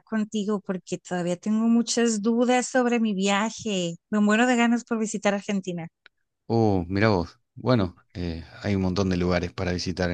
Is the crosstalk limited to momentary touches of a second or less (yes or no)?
yes